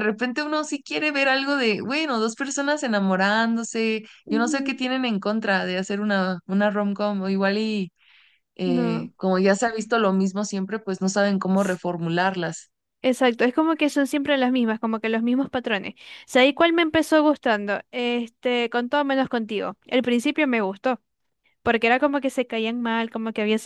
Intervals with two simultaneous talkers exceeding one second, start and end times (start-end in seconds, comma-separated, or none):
none